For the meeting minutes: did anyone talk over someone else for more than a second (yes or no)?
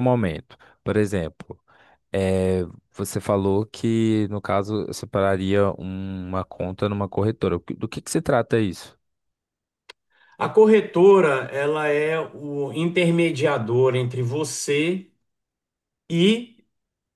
no